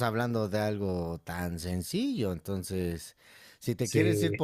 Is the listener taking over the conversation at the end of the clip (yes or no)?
no